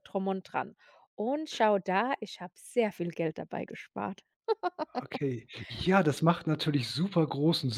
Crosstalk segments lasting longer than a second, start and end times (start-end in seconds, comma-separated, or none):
none